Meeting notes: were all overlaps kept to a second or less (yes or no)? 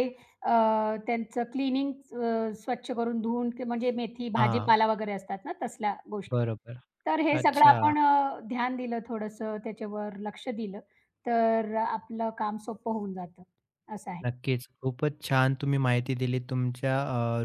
yes